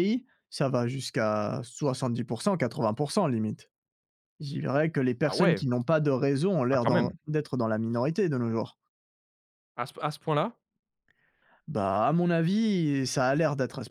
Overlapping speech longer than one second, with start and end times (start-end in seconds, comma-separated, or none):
none